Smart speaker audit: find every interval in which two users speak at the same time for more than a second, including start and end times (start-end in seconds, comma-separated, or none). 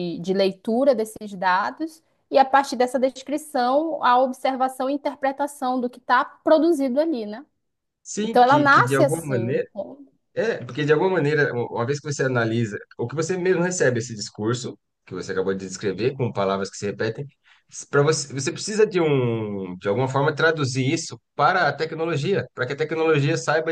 8.2-9.6